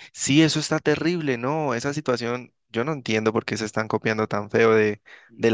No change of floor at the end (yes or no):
yes